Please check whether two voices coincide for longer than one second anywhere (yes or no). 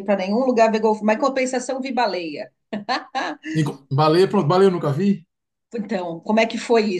no